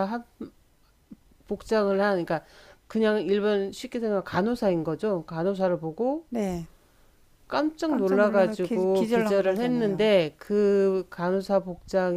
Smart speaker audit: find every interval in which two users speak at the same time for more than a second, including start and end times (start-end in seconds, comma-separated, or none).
7.9-10.1